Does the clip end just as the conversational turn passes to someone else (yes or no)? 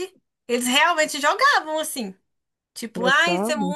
no